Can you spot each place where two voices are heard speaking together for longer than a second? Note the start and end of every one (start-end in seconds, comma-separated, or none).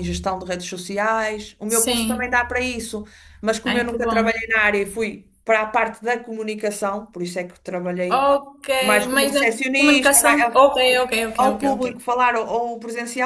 9.1-10.6